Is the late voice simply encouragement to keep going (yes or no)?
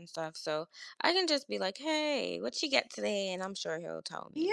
no